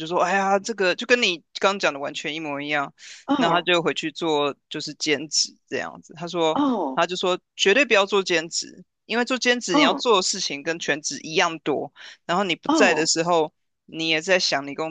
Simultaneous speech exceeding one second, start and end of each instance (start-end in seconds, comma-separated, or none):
none